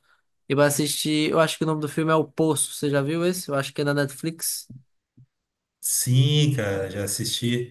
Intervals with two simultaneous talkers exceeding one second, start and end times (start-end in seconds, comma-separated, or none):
none